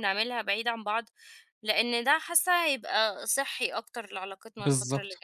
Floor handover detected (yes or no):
yes